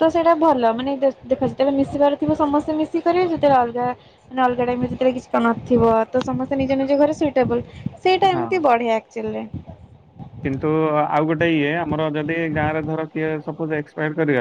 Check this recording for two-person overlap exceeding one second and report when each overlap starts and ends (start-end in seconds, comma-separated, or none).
none